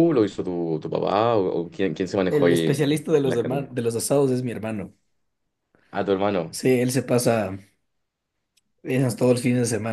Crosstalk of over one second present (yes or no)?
yes